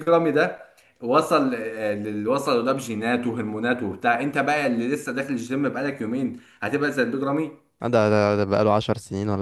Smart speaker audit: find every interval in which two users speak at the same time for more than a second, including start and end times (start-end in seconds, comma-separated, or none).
none